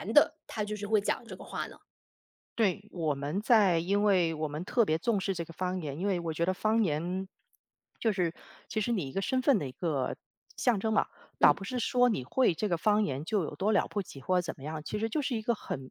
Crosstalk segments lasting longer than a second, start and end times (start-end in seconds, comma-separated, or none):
none